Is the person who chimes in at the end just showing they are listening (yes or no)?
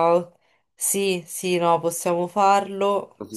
no